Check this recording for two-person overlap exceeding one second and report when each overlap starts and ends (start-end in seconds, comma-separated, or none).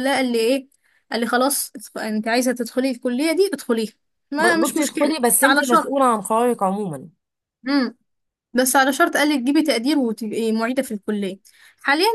4.4-5.9